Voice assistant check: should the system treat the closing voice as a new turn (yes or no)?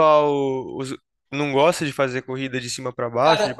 yes